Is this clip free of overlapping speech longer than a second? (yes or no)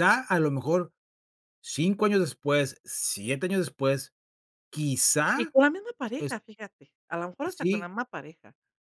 yes